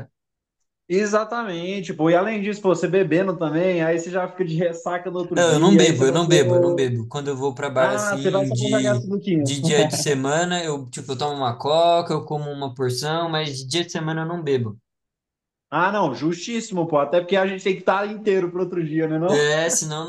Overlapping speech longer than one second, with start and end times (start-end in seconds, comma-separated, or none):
5.3-6.9, 7.8-9.5